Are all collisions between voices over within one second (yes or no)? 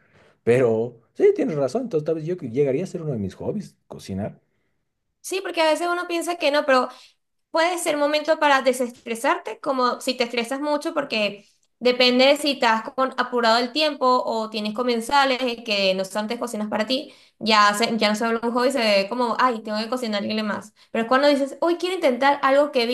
yes